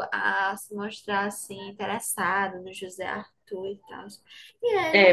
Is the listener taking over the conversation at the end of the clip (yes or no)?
yes